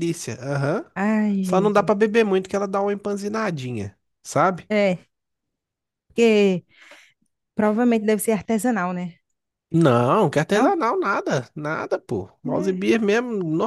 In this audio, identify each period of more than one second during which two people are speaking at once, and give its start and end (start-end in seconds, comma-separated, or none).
none